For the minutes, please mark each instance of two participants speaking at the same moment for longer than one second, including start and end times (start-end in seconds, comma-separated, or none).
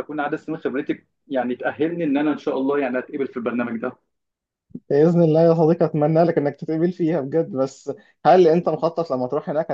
none